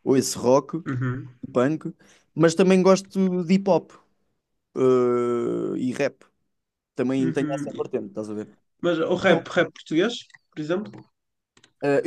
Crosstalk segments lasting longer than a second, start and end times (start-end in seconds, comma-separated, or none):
none